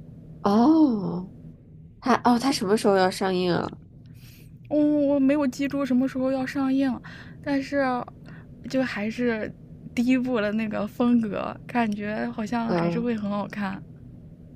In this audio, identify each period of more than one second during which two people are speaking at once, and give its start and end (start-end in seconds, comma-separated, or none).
none